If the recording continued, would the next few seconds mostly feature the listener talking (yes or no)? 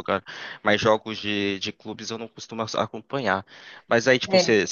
no